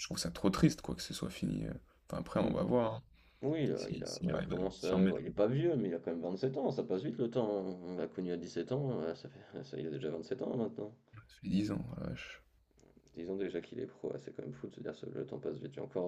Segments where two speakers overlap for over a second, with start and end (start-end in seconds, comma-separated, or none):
3.8-5.3